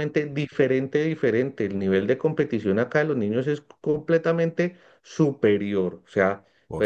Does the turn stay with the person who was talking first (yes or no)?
yes